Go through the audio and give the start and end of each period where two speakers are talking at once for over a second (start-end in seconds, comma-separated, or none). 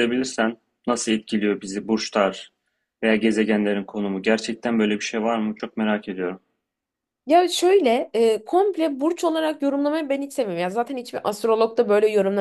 none